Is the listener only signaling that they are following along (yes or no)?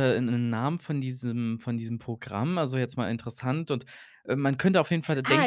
no